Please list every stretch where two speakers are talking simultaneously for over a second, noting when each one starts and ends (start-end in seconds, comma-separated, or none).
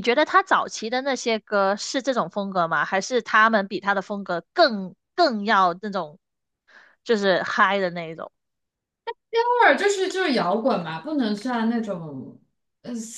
none